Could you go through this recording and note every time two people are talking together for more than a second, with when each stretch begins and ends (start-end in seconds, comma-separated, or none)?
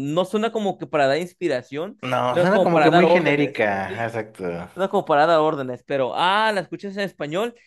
2.0-4.1